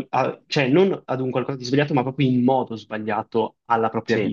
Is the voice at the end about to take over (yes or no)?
no